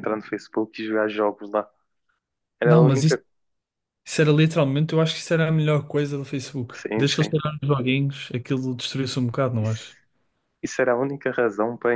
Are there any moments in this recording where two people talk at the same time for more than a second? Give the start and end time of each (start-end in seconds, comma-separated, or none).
none